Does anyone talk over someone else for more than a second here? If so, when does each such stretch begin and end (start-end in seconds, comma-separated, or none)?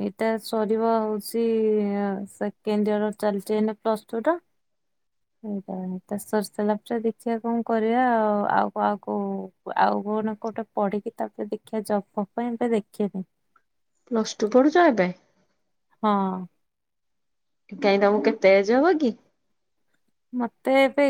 none